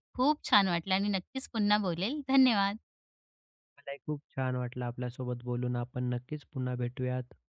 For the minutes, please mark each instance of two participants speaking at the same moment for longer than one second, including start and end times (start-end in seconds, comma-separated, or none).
none